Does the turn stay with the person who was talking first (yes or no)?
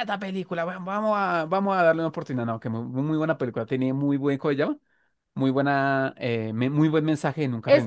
no